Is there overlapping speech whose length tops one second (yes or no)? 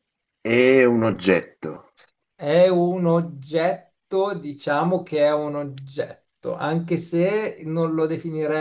no